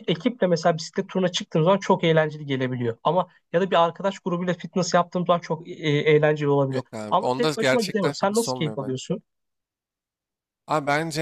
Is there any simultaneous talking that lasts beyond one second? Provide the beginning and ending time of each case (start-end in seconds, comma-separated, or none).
6.7-9.0